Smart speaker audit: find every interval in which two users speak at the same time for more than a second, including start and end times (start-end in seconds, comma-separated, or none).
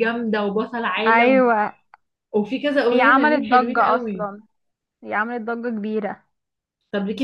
2.9-4.2